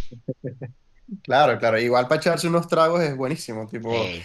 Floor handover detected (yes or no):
no